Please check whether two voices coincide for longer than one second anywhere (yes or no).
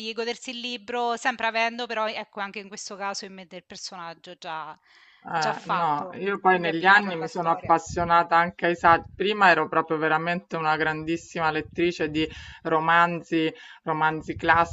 yes